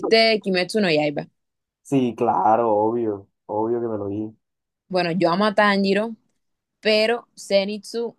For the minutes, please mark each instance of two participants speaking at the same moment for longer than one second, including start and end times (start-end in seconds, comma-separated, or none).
none